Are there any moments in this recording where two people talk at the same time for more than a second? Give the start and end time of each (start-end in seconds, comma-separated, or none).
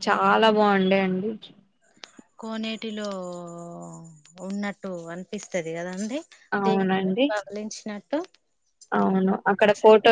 none